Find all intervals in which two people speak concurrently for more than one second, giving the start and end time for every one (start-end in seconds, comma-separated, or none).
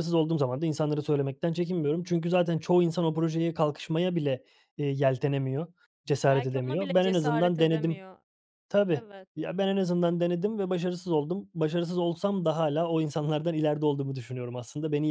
6.3-8.0